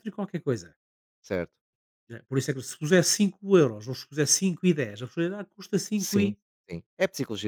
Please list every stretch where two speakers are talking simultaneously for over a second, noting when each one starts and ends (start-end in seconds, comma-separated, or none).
none